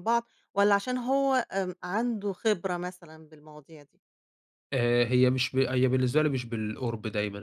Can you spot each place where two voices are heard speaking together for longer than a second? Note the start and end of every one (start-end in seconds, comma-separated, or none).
none